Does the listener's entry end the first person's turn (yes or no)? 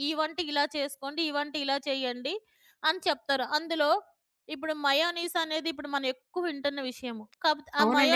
yes